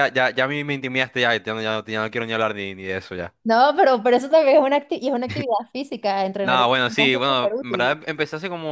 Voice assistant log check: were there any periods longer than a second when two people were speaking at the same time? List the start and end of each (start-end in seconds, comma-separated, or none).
6.4-8.0